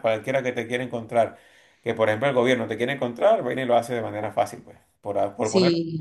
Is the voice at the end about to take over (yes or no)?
yes